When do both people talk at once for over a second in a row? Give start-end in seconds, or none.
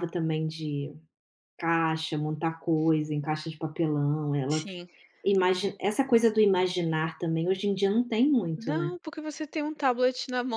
none